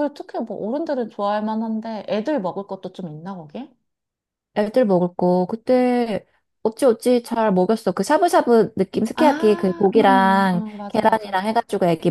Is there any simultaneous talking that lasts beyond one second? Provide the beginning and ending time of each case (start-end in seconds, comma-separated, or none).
9.9-11.3